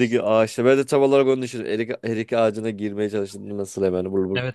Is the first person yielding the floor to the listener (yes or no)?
yes